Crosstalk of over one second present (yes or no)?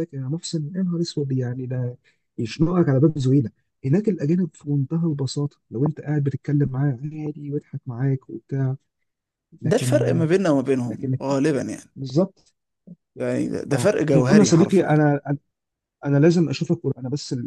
yes